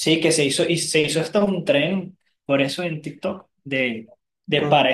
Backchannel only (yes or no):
yes